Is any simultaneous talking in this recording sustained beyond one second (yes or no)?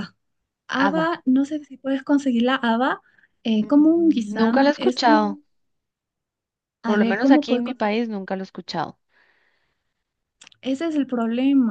yes